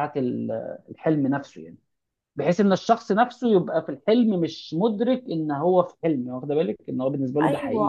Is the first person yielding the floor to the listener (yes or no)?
yes